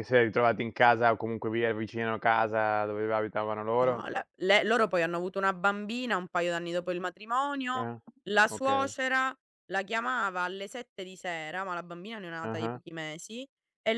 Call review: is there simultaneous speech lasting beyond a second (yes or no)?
no